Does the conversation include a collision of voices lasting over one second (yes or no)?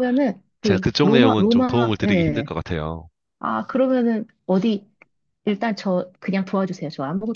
yes